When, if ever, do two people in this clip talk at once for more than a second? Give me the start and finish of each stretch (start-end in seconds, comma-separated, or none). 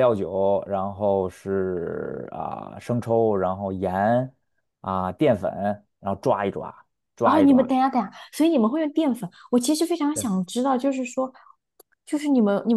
none